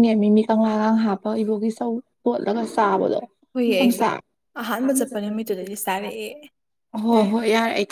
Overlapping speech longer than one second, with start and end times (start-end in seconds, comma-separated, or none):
4.9-6.2